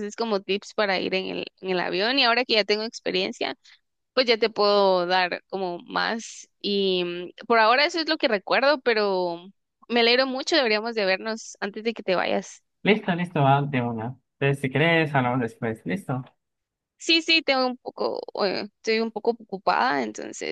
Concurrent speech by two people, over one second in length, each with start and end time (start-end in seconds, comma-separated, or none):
none